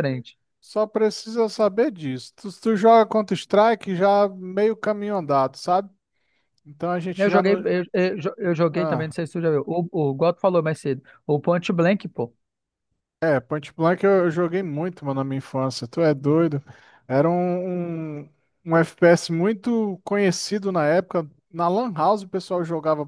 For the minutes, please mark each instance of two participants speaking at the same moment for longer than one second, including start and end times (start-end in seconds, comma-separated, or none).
none